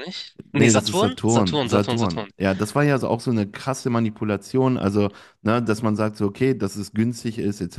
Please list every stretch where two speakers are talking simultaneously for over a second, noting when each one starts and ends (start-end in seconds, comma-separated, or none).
0.5-2.3